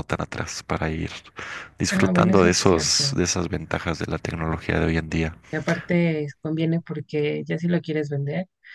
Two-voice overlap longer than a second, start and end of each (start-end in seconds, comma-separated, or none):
1.9-3.2